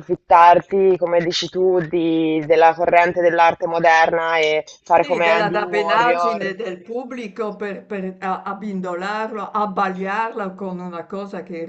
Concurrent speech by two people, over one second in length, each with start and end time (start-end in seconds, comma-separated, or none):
5.0-6.5